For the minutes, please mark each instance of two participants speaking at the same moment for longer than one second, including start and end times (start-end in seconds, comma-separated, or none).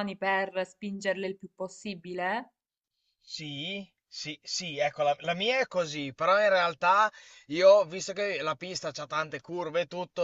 none